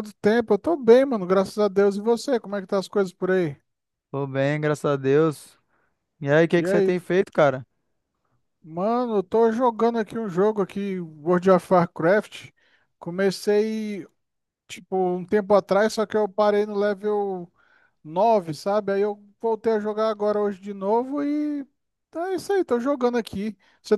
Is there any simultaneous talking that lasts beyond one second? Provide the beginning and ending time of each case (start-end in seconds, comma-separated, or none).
none